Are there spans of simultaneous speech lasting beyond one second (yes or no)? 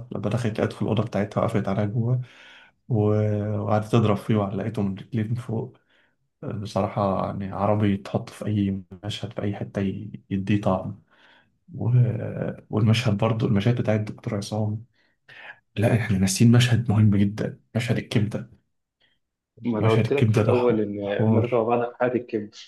yes